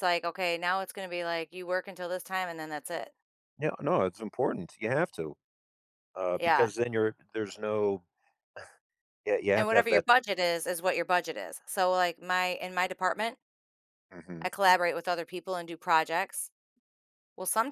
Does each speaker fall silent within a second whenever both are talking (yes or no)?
yes